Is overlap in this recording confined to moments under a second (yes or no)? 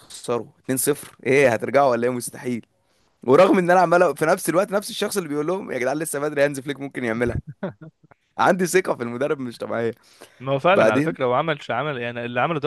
yes